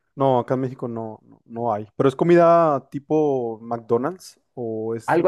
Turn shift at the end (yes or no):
yes